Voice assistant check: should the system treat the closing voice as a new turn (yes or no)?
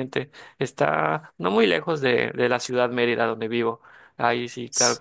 no